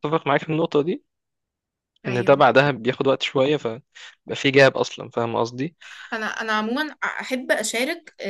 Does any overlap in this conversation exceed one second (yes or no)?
no